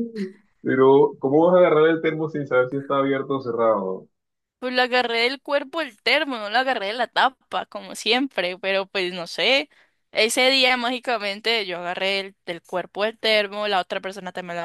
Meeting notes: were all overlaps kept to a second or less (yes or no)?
yes